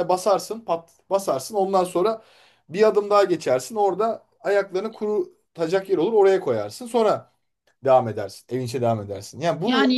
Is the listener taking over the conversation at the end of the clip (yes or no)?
yes